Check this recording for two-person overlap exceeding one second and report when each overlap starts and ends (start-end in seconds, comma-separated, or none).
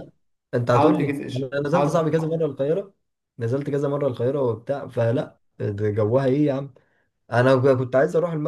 0.7-2.3